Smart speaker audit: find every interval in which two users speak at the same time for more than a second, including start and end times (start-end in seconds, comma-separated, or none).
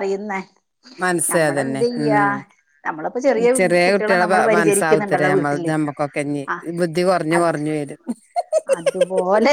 3.8-5.7